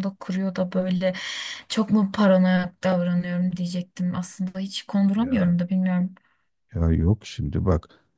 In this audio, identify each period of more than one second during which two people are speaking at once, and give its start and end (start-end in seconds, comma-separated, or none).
none